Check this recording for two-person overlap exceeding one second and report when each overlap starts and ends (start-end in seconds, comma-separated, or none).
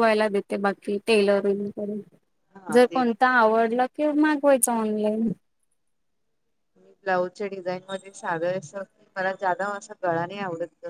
none